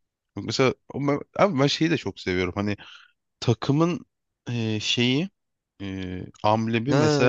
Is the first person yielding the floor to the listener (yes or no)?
yes